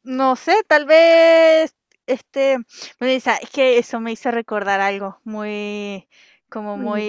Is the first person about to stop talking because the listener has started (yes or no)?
no